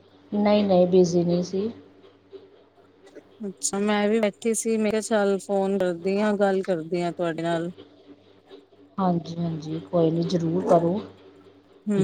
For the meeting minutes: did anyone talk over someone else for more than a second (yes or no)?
no